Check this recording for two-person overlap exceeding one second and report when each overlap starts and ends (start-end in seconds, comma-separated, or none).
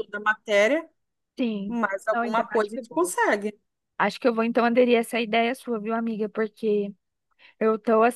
1.7-3.1